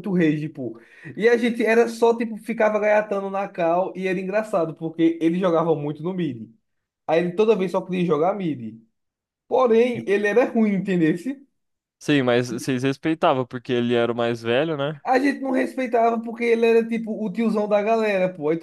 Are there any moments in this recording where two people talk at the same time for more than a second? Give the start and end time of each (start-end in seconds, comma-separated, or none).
none